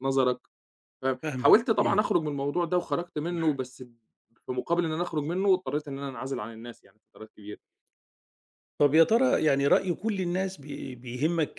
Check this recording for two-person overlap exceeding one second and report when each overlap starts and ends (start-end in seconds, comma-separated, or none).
none